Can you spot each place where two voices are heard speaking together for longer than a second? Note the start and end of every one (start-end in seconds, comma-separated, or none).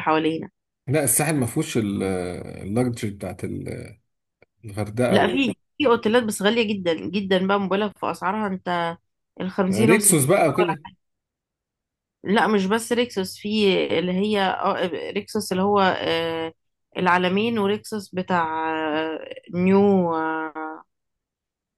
none